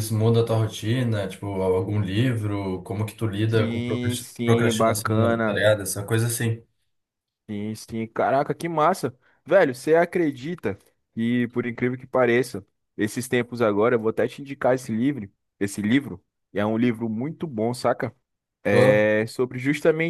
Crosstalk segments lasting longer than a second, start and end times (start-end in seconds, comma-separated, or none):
3.5-5.7